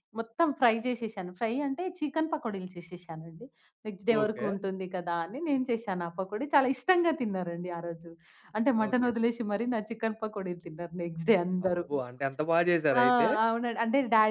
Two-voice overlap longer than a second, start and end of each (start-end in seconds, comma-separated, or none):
none